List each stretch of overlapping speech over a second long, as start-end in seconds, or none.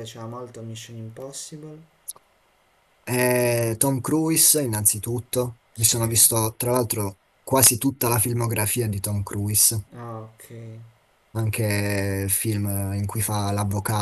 none